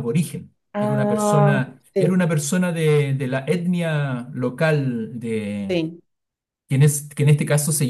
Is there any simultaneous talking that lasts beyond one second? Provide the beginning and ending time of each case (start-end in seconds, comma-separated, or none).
0.7-2.2